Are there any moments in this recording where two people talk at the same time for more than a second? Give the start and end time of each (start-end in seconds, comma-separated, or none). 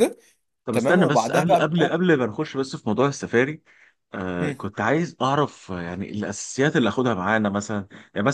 0.7-2.0